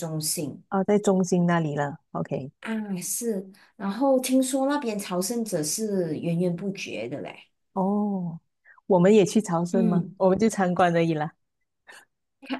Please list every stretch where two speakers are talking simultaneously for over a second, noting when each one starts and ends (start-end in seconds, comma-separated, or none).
none